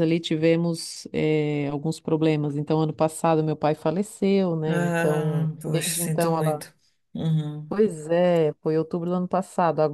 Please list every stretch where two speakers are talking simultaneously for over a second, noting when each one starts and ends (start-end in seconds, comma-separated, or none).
4.7-6.7